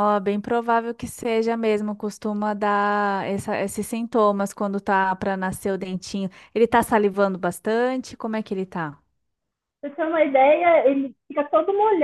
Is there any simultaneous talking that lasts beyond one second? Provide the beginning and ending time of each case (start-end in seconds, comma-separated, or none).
none